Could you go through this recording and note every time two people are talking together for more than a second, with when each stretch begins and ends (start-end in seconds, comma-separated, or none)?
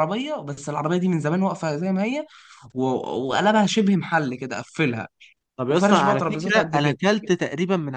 5.7-7.0